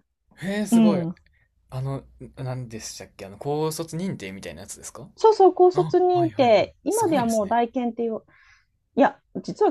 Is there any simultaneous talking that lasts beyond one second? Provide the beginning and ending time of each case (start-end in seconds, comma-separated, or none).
5.7-7.6